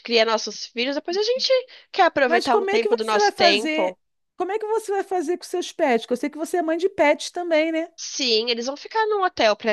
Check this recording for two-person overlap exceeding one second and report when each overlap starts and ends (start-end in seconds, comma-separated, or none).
2.3-4.0